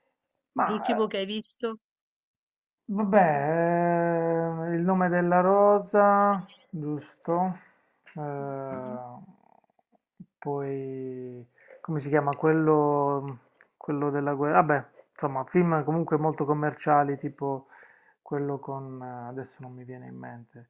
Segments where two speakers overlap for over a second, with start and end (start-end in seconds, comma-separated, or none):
none